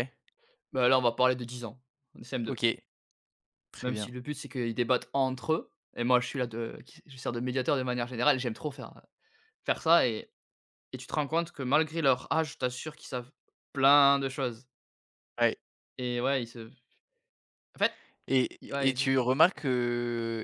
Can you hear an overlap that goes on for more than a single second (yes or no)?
no